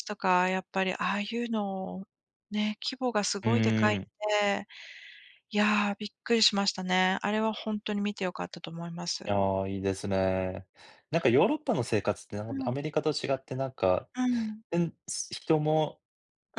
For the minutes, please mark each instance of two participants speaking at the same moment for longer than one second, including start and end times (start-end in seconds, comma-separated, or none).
none